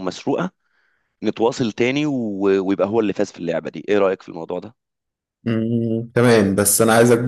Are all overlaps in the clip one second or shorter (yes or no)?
yes